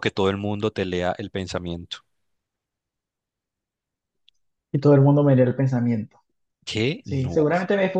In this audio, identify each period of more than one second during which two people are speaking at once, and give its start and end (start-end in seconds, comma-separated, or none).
none